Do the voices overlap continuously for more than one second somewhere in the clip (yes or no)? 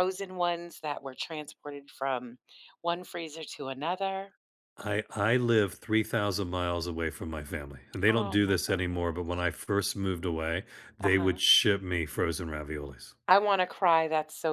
yes